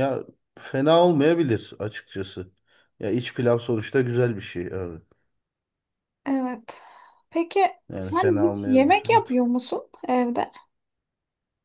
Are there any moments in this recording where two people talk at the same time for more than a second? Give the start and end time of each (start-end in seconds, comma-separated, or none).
8.0-9.3